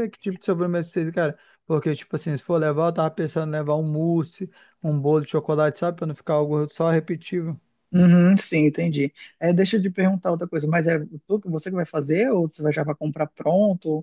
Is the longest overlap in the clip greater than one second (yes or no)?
no